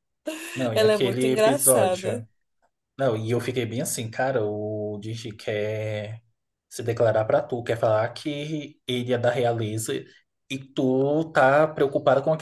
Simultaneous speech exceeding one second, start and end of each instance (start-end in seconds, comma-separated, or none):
0.7-2.2